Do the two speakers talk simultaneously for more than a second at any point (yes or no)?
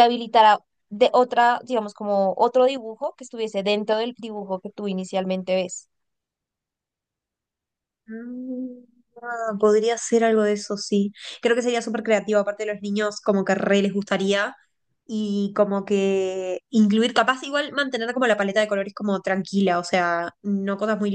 no